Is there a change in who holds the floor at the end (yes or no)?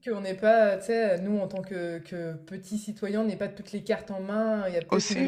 no